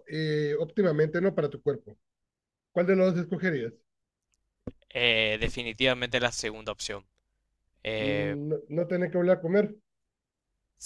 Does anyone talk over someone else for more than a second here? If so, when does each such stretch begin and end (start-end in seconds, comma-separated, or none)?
none